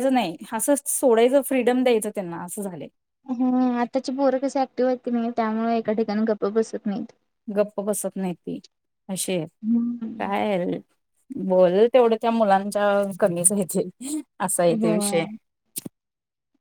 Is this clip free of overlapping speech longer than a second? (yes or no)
yes